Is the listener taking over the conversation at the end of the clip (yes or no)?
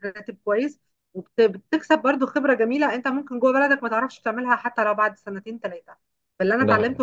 no